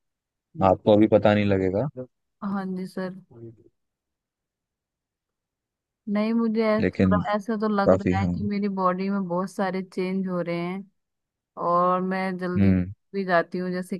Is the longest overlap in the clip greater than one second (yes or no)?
no